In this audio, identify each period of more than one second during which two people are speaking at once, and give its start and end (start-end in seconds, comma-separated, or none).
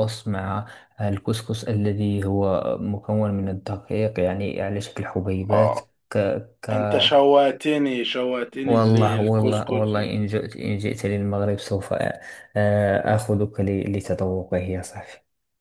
8.6-9.9